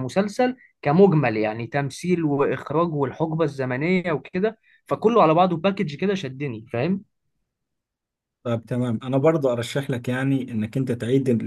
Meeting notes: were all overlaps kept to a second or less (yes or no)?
yes